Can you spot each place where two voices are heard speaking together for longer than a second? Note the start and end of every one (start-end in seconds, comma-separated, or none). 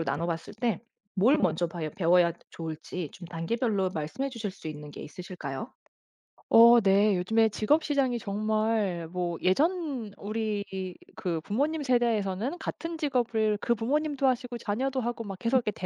none